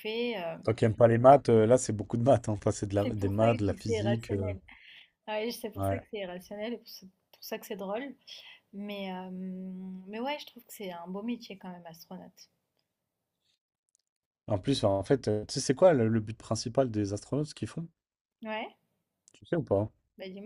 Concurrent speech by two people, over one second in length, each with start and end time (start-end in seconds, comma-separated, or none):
3.0-4.5